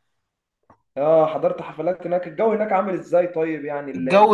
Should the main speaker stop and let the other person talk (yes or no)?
yes